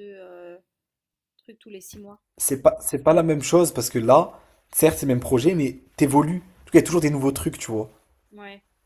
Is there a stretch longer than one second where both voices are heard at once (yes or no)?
no